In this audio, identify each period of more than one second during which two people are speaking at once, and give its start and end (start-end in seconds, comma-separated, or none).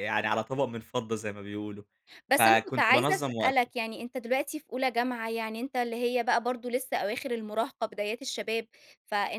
2.3-3.7